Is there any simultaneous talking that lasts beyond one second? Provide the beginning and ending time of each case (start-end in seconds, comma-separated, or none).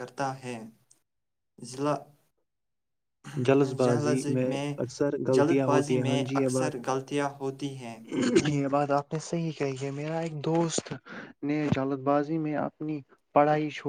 5.3-6.7